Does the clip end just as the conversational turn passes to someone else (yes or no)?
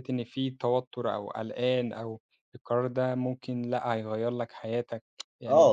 yes